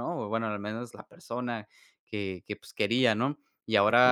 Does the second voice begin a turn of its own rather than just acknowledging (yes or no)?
no